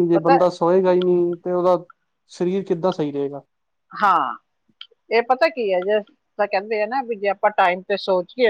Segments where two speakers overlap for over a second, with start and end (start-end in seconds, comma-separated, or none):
none